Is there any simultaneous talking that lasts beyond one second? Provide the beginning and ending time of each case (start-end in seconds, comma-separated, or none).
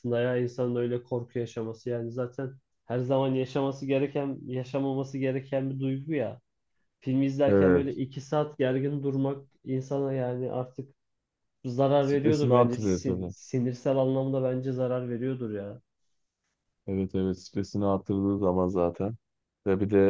12.0-13.3